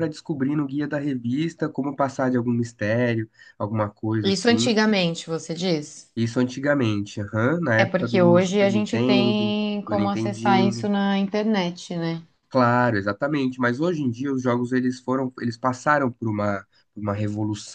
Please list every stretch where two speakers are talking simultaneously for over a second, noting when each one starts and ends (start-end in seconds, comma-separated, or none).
7.8-10.9